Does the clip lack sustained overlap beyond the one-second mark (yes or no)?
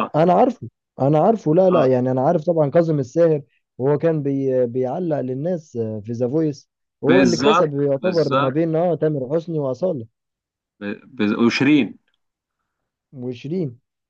no